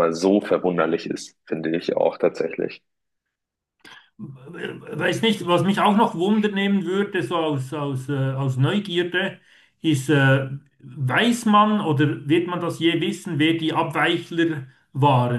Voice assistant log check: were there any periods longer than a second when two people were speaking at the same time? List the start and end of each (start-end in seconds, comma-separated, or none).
none